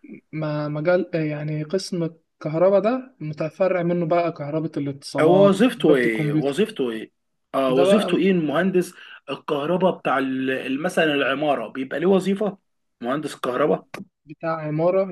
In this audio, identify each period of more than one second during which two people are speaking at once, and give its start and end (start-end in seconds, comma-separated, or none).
5.2-6.7